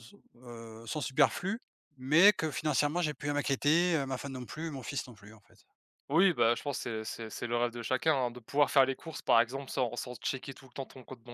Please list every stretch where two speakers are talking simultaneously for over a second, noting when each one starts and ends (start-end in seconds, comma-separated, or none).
none